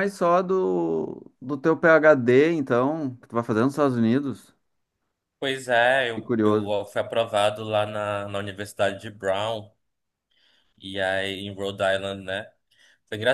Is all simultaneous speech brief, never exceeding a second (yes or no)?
yes